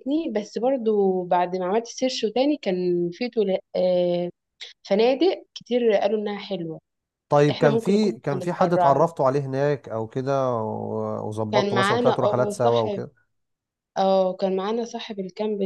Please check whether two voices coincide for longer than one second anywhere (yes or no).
yes